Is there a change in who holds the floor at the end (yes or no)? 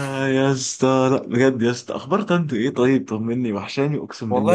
yes